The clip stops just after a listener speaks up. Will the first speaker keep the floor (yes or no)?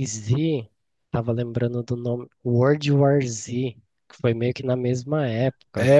no